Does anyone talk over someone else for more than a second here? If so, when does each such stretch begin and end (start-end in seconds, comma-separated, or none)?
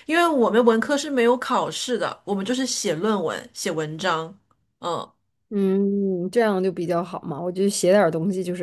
none